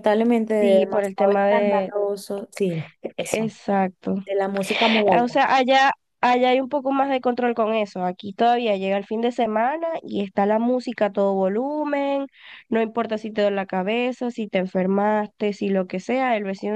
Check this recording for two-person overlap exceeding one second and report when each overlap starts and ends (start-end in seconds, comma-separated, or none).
0.6-1.9